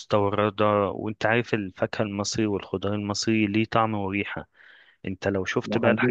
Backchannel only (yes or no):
yes